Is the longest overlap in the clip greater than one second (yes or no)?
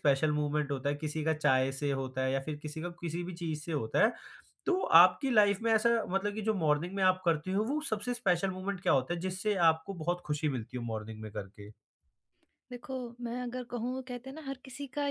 no